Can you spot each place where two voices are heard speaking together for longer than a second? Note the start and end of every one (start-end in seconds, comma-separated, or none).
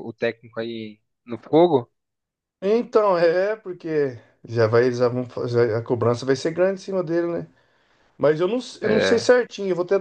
none